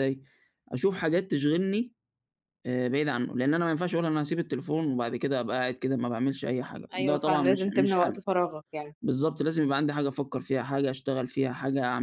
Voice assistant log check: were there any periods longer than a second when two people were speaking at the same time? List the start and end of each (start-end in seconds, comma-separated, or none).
6.9-8.2